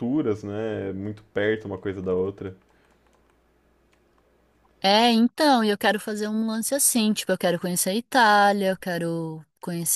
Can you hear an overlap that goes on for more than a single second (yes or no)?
no